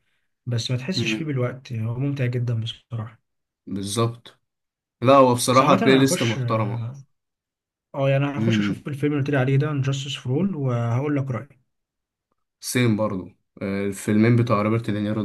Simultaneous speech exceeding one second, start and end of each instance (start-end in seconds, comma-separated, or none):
5.5-6.8